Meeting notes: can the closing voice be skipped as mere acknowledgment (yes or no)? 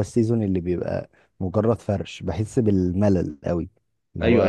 no